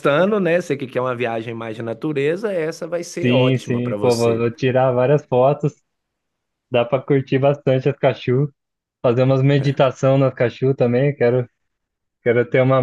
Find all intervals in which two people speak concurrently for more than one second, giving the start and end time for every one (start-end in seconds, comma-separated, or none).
3.2-4.5